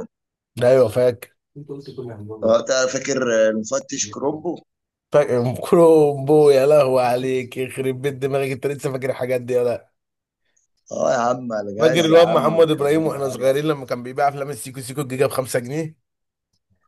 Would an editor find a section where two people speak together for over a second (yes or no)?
yes